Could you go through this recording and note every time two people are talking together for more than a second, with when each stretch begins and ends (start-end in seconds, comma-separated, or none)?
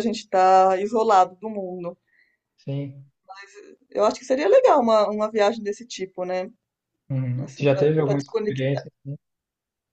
7.4-8.8